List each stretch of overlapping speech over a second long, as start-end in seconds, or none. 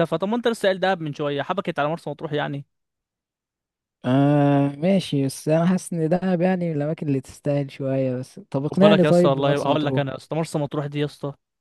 8.6-10.0